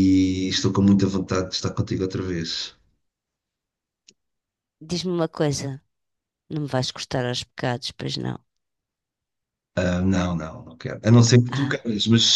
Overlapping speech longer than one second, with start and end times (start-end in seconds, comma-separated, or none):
none